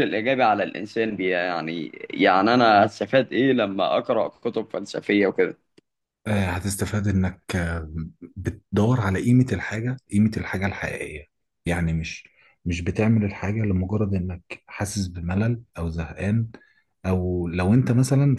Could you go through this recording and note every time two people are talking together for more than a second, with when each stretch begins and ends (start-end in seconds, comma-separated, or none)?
none